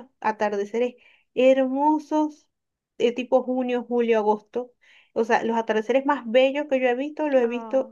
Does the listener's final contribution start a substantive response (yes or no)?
no